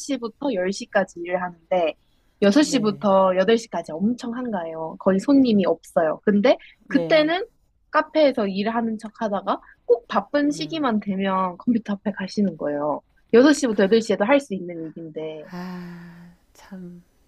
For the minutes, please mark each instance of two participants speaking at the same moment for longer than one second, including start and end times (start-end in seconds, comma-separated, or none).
none